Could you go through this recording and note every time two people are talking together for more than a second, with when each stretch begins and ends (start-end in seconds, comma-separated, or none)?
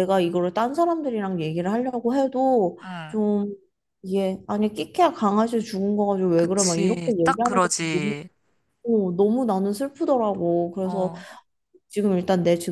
6.4-8.2